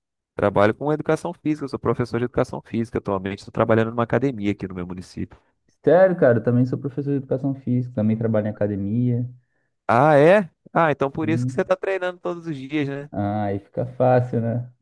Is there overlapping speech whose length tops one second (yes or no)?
no